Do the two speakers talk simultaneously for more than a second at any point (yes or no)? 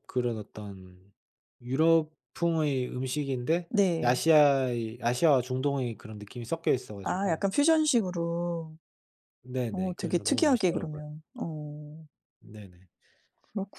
yes